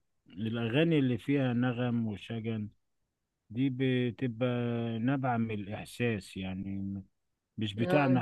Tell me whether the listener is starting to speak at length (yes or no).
no